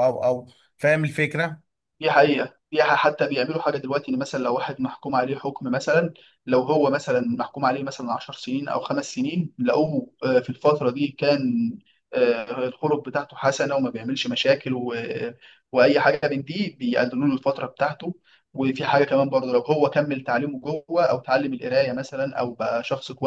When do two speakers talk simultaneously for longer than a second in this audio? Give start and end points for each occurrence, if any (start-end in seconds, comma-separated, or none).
none